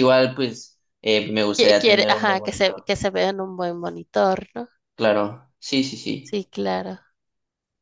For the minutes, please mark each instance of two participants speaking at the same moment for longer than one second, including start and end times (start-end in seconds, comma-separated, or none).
1.6-2.9